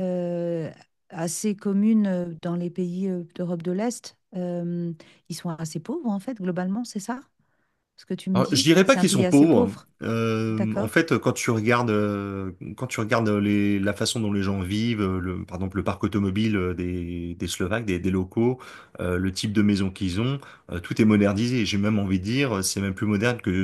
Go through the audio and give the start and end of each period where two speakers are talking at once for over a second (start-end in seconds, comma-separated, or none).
8.3-9.9